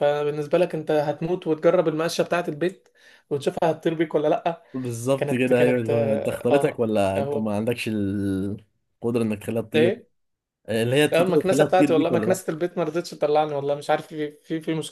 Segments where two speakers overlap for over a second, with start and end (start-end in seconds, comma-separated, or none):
5.2-7.5, 11.1-12.4